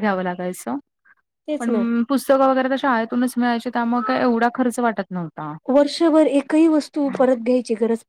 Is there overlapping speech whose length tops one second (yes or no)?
no